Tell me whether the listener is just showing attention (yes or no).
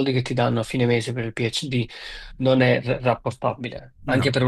yes